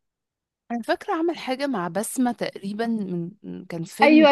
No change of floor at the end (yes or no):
no